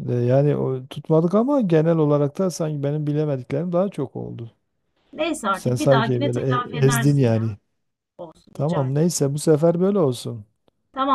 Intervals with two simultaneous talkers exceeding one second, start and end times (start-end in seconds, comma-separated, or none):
5.5-7.5